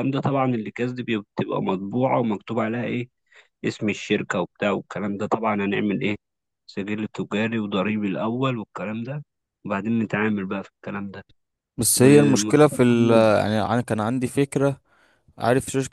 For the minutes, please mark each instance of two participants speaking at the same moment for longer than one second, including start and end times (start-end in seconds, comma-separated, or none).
12.0-13.3